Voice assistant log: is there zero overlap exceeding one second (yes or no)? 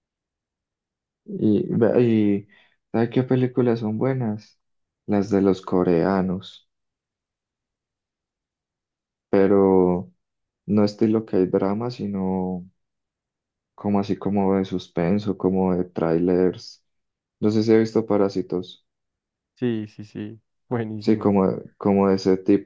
yes